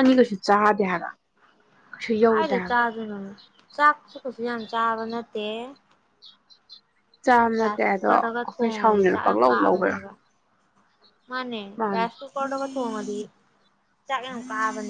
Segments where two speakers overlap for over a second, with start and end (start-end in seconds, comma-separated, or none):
7.6-10.0